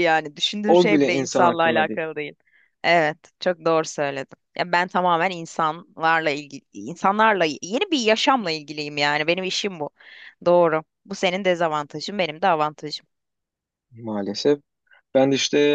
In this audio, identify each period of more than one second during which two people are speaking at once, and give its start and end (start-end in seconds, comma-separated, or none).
0.7-2.0